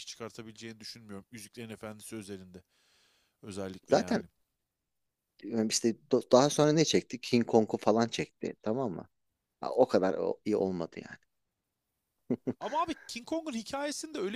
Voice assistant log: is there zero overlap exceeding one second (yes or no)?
yes